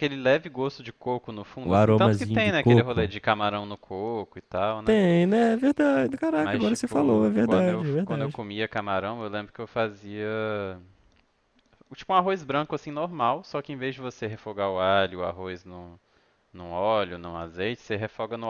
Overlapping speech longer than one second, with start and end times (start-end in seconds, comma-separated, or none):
1.6-3.1, 6.4-8.4